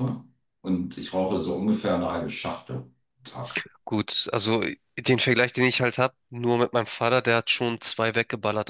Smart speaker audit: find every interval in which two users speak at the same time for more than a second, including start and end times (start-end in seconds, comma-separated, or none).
none